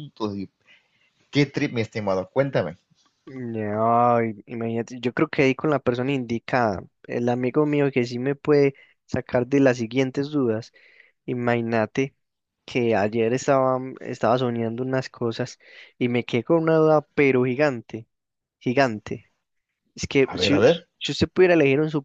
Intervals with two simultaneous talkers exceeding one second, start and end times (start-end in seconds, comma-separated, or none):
none